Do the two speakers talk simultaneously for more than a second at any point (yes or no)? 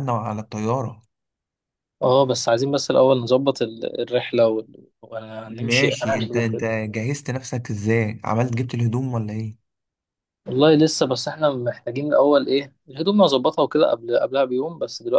yes